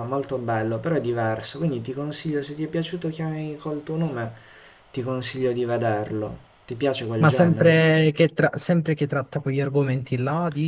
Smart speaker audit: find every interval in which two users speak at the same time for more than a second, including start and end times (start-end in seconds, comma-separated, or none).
none